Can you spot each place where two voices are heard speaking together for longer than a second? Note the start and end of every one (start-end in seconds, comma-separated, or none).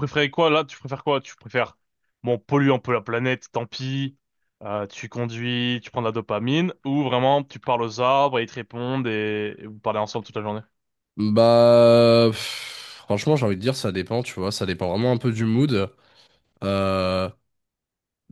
none